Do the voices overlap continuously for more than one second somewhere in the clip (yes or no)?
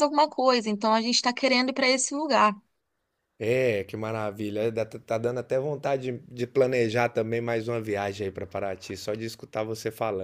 no